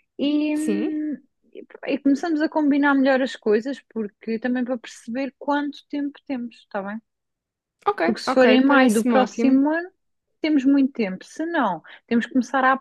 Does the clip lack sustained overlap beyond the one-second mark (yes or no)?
no